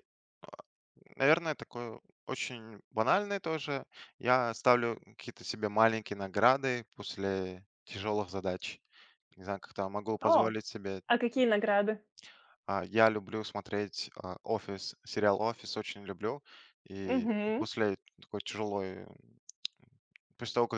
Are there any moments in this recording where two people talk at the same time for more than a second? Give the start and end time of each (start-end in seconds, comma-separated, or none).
none